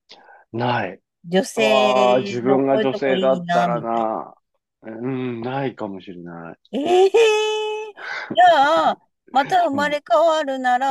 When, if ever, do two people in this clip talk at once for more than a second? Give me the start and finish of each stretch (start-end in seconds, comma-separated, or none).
1.6-4.1